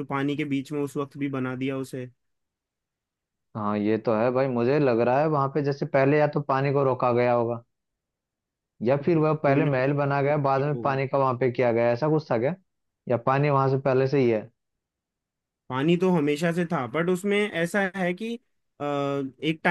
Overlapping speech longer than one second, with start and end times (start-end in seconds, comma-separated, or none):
9.4-11.0